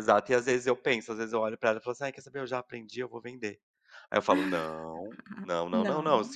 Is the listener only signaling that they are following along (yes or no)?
yes